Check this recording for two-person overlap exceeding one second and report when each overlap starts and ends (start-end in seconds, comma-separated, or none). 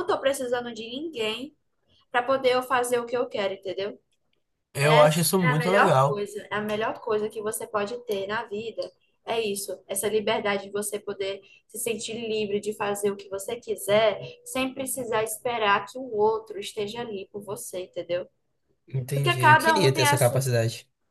4.8-6.3, 19.1-20.4